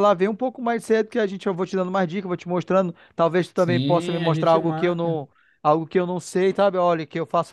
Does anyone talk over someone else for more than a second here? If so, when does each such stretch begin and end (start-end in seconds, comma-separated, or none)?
3.6-5.2